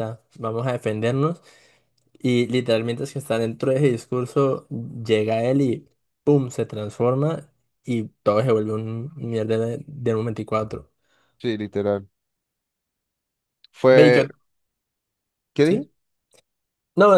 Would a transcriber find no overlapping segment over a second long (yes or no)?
yes